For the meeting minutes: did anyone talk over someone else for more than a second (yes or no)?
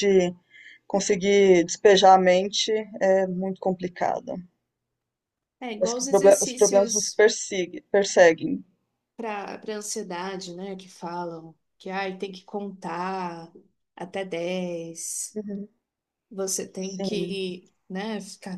yes